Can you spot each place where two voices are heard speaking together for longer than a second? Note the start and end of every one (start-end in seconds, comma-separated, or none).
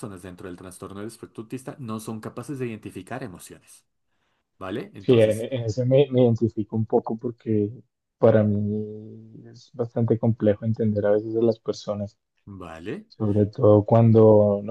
none